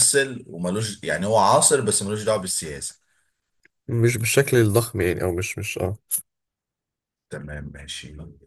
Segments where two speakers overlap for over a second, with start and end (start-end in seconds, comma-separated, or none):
none